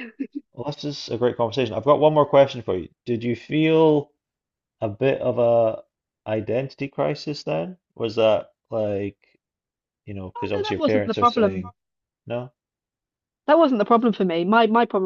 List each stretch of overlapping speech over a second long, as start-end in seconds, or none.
10.3-11.7